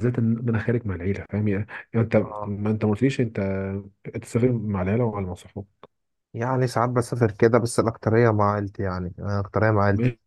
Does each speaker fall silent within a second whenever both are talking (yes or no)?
yes